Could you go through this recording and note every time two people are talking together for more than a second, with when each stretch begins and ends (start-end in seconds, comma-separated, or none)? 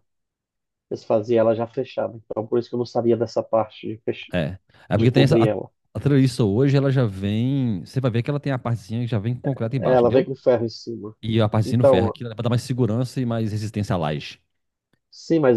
none